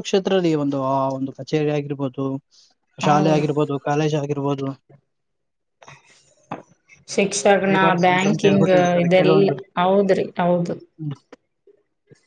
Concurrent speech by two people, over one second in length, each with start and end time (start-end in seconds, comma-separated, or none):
7.7-9.5